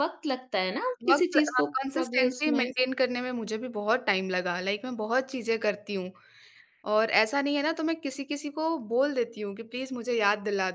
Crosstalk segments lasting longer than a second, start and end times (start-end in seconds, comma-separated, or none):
1.1-2.6